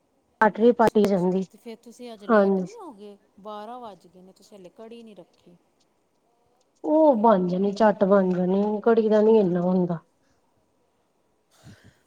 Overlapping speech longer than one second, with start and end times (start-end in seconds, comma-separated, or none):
none